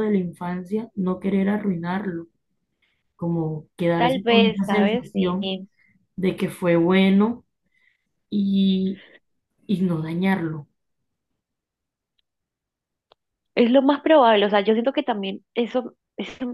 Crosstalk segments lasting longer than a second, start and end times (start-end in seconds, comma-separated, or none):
4.0-5.4